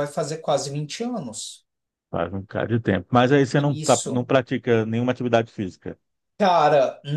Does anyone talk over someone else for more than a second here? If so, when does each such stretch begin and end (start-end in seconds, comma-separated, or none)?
none